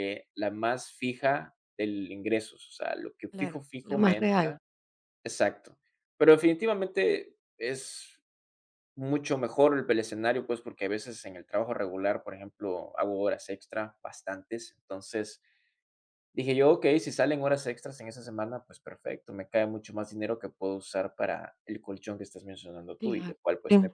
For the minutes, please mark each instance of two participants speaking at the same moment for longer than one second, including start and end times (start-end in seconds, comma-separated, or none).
3.3-4.6